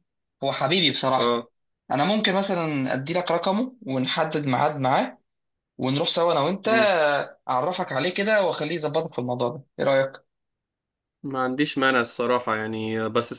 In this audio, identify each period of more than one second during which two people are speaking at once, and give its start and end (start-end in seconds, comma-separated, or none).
none